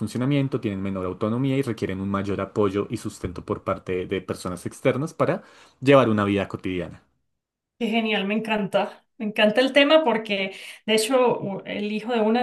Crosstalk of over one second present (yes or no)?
no